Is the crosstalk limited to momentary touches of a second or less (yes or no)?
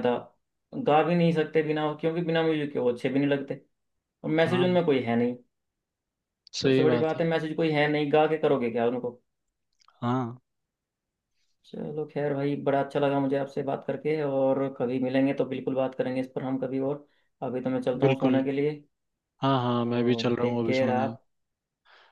no